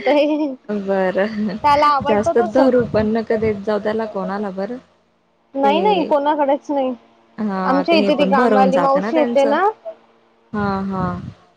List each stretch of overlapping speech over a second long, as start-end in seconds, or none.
7.7-9.6